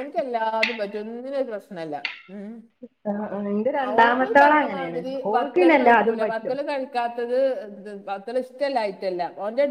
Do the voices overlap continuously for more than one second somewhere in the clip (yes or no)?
yes